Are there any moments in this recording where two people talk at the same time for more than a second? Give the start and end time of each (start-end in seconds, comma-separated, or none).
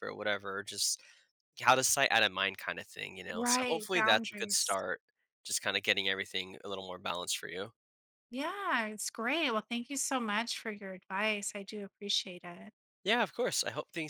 3.3-4.8